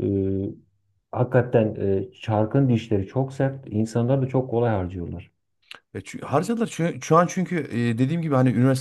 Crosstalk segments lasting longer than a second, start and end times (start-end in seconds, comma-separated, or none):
none